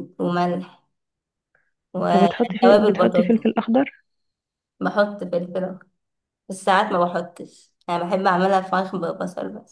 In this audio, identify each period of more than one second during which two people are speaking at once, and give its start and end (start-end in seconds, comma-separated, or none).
2.1-3.4